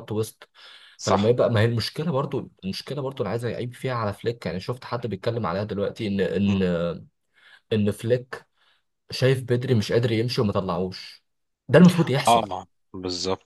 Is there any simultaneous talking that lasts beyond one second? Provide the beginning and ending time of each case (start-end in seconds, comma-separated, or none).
none